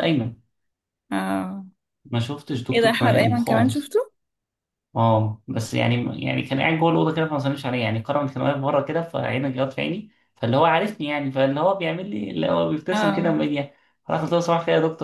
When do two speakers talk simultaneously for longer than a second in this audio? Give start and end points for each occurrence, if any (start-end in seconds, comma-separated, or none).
2.7-3.9